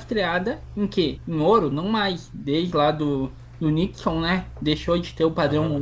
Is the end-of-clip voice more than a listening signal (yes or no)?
no